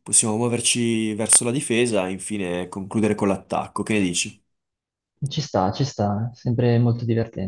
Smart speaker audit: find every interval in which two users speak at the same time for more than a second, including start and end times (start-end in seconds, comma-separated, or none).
none